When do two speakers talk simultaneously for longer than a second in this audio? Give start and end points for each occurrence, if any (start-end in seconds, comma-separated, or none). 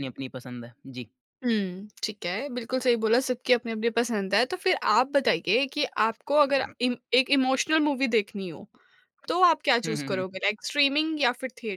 none